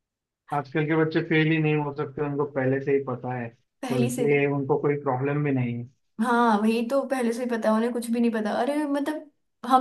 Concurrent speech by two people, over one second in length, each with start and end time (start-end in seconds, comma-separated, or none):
none